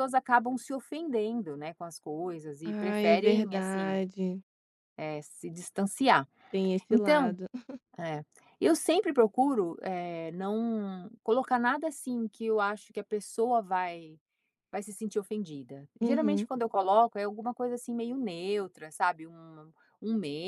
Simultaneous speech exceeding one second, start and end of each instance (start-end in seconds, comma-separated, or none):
2.6-4.0